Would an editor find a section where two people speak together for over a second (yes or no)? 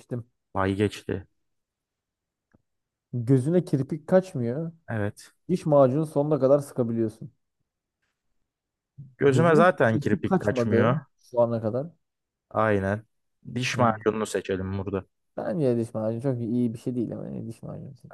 yes